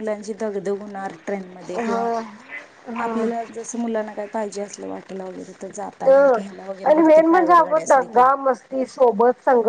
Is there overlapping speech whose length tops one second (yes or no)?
yes